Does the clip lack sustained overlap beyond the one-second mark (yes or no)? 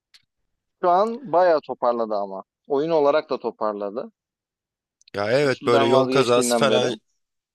no